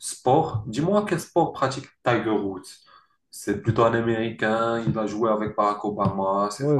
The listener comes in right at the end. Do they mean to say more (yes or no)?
yes